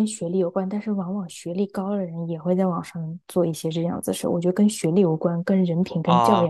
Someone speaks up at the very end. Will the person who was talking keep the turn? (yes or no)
no